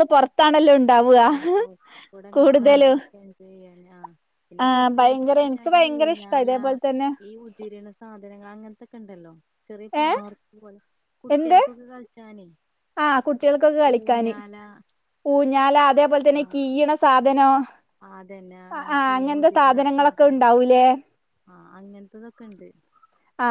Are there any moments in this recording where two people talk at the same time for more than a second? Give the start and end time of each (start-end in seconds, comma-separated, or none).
4.6-6.5